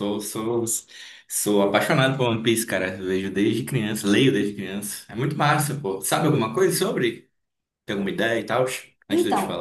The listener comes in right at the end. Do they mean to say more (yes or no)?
yes